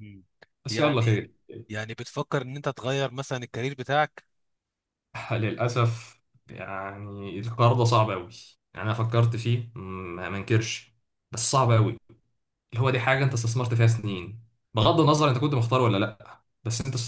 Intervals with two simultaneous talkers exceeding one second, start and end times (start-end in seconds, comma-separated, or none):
none